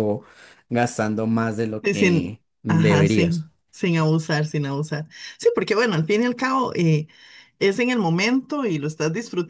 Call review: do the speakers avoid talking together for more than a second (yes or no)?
no